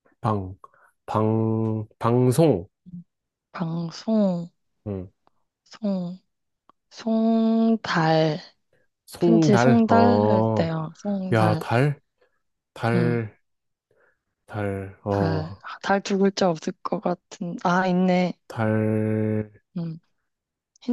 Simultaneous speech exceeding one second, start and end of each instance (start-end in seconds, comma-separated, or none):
9.2-10.7